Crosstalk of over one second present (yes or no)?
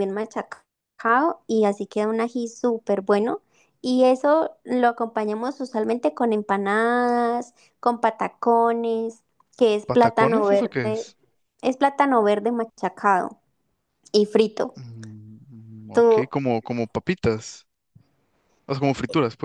yes